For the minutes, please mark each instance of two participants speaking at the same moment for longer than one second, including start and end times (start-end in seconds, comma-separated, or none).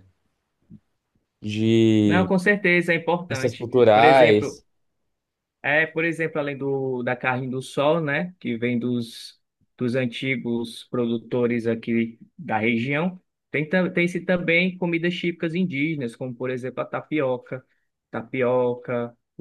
3.3-4.6